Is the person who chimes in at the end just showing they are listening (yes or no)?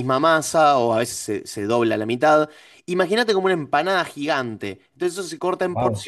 yes